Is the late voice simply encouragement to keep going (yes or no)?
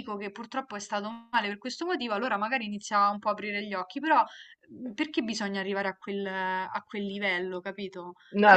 no